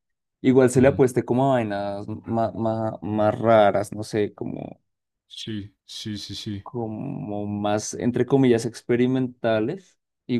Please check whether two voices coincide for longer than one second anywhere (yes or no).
no